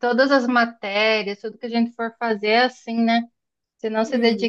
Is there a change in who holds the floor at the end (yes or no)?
no